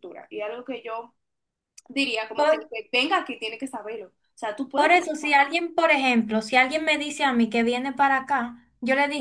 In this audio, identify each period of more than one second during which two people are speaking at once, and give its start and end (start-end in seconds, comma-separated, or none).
none